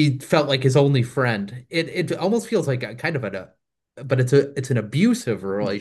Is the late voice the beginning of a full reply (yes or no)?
yes